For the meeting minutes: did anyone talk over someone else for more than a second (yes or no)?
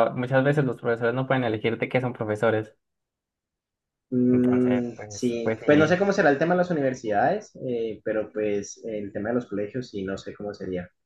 yes